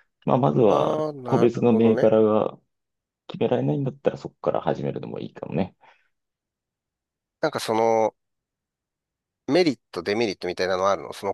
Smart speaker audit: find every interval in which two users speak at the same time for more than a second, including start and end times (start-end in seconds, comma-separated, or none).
0.7-2.1